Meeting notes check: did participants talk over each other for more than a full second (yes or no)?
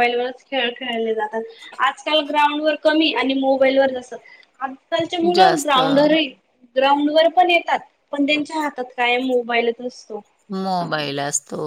no